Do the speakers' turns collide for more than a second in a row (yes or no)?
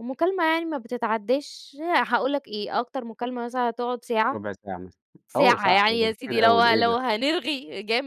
yes